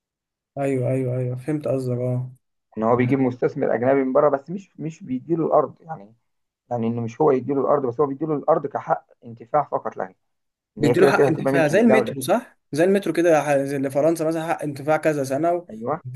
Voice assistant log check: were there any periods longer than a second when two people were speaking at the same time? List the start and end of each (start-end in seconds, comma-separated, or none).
10.8-12.1